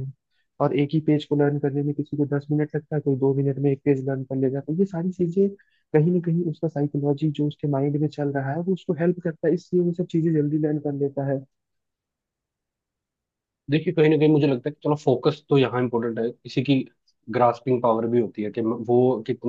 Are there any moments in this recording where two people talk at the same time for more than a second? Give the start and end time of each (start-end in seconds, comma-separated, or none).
none